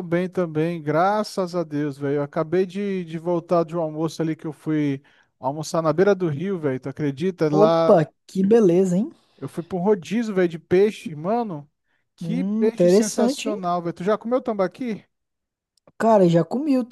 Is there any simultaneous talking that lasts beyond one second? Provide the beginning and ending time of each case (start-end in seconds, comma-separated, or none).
12.2-13.6